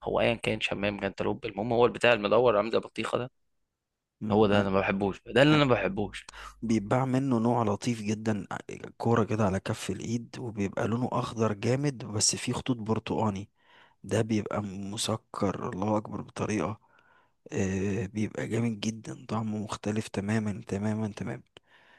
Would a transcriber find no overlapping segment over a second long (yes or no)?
yes